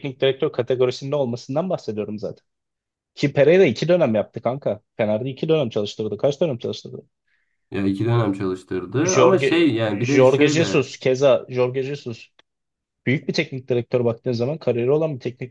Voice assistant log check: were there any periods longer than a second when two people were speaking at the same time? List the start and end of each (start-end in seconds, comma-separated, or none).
9.0-10.9